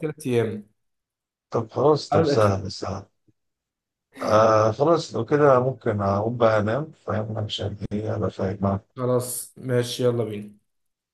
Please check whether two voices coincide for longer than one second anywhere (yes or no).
no